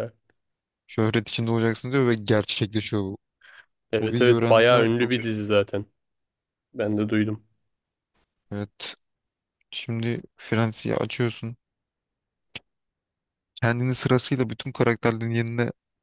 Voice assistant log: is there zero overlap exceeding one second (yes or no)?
no